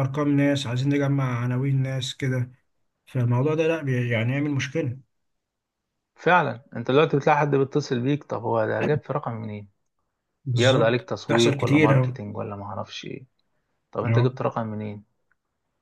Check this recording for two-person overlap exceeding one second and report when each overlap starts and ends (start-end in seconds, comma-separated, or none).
10.6-12.2